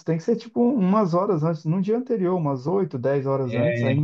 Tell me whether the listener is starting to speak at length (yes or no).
no